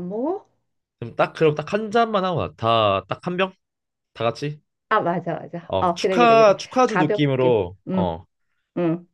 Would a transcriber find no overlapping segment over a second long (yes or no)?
no